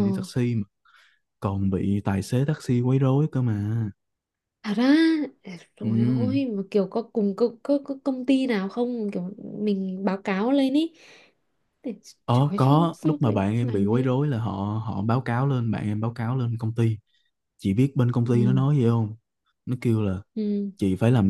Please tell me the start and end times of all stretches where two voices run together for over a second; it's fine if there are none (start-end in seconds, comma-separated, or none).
12.3-14.1